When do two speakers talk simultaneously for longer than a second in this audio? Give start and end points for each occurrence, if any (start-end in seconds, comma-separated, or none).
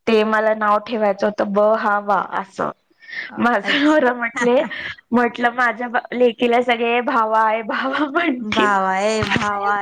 none